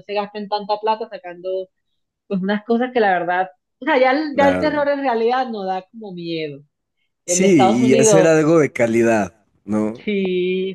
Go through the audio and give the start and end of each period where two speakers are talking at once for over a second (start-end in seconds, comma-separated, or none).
7.3-8.6